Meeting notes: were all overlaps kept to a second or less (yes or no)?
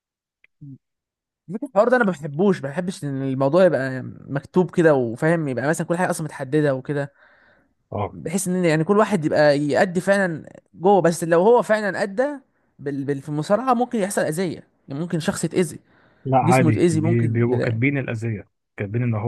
no